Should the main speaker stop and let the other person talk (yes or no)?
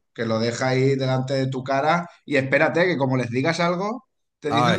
no